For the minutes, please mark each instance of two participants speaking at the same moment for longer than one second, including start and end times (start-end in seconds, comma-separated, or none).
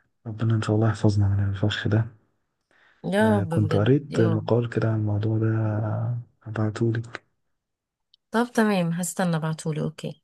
3.2-4.5